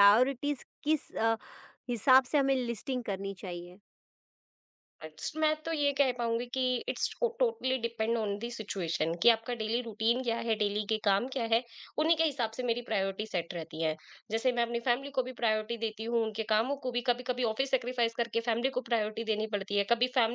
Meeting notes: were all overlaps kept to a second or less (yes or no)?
yes